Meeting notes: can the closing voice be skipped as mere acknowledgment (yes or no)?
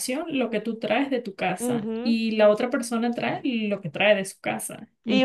no